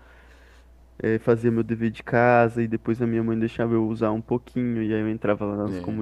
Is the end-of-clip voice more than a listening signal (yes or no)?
no